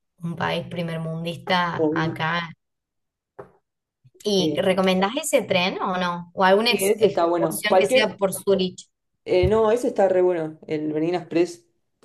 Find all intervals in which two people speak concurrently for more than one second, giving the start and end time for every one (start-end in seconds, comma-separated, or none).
6.7-8.2